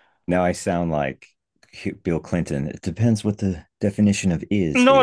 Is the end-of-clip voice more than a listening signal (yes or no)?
yes